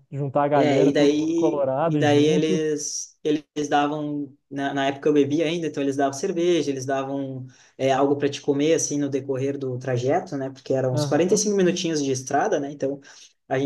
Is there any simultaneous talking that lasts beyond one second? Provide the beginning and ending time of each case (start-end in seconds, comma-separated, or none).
0.5-2.6